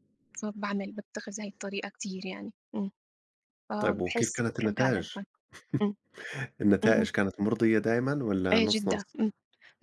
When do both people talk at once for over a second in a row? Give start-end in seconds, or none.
3.8-5.2